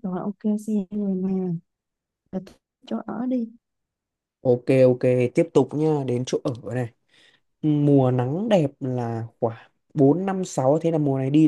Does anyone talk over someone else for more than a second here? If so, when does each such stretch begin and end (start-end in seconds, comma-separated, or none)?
none